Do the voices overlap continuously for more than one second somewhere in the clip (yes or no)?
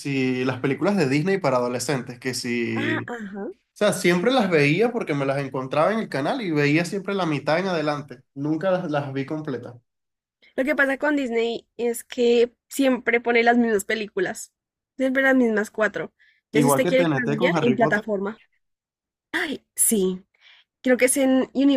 yes